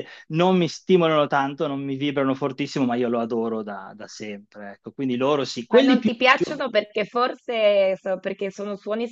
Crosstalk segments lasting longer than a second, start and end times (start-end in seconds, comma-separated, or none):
none